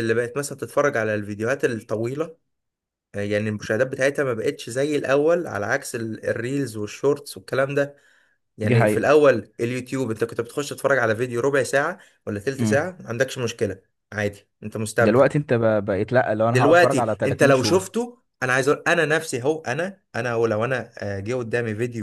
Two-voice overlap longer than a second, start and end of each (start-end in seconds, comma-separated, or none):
16.5-18.1